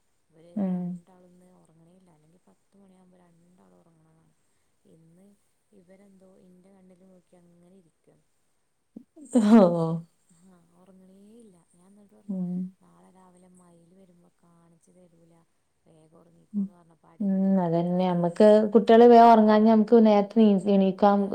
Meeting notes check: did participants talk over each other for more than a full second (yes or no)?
yes